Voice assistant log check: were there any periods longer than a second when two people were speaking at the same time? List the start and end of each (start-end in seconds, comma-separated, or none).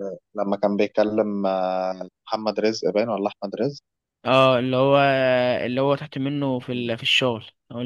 none